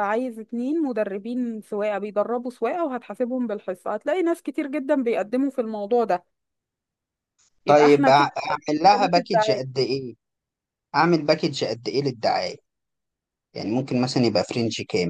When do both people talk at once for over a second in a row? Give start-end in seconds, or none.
7.7-9.7